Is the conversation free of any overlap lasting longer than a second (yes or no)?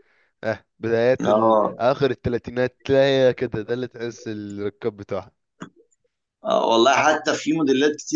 yes